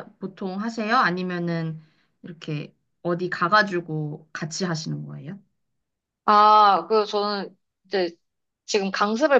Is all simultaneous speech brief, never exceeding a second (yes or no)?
yes